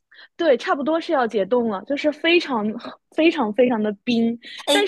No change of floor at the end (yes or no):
yes